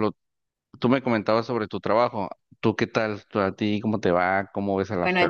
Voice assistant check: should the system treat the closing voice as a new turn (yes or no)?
yes